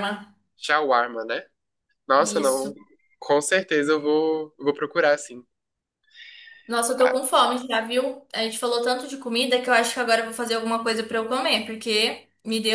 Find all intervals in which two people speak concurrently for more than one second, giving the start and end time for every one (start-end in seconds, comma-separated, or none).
none